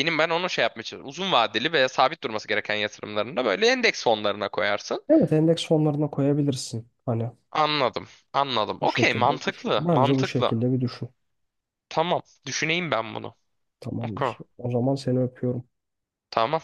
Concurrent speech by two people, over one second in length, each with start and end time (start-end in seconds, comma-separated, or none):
8.8-10.6